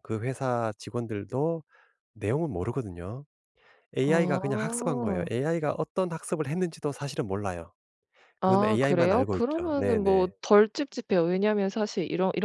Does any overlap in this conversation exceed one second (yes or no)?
yes